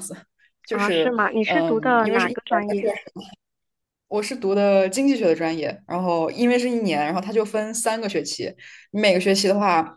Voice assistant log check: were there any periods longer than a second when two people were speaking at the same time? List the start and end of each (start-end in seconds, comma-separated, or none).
0.7-2.9